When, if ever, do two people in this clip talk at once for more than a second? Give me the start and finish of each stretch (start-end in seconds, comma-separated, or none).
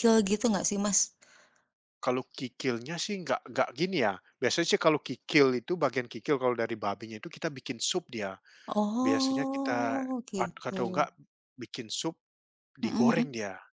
9.0-10.8